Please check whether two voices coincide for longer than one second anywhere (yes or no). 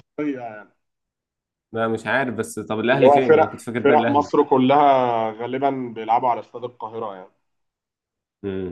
yes